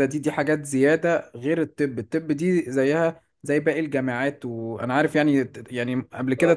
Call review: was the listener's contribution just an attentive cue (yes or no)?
yes